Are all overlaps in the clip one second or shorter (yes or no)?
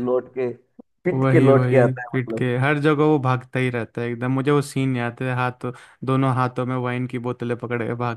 no